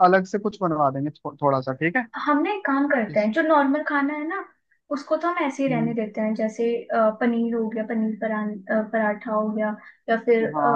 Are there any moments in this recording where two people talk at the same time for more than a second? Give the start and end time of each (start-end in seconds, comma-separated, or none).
none